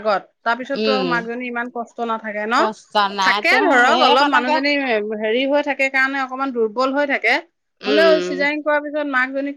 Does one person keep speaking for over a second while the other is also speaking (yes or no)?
yes